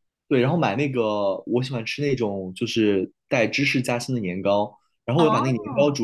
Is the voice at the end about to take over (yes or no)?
no